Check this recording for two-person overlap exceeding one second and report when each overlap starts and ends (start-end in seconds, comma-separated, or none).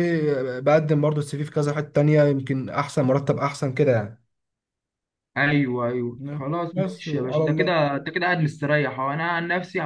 6.2-7.8